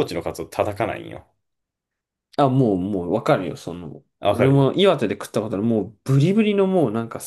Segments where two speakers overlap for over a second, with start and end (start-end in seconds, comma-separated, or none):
none